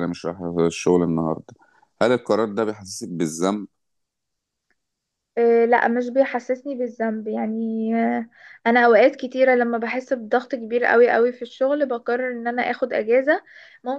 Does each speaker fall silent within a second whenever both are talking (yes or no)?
yes